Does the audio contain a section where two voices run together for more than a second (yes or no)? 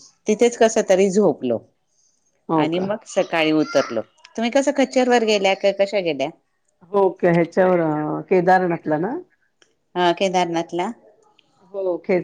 no